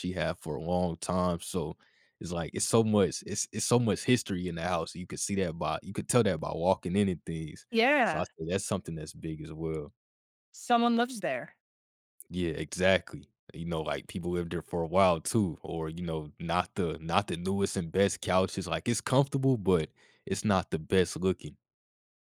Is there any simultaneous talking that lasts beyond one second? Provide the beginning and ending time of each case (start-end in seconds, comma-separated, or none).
none